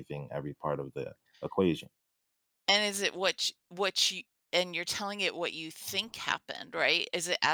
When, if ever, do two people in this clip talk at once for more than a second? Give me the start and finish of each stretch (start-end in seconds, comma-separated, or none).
none